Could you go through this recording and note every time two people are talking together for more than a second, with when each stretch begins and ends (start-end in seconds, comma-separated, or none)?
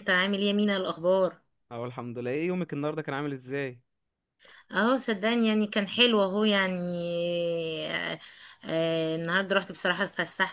none